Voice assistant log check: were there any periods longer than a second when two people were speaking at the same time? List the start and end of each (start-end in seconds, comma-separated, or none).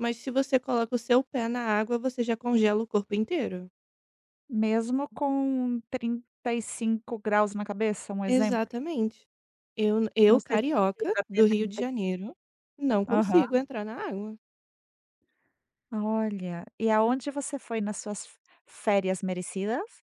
10.3-12.3